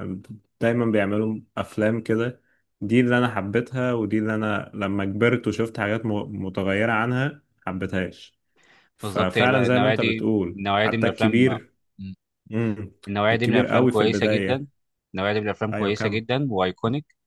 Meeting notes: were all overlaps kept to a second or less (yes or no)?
no